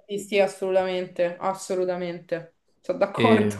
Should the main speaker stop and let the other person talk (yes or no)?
yes